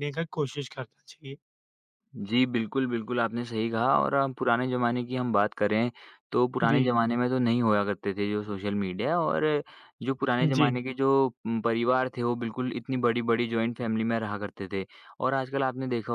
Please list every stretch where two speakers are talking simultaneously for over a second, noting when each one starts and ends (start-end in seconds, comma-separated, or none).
none